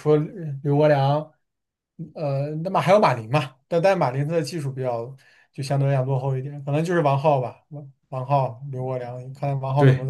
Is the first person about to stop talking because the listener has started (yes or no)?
yes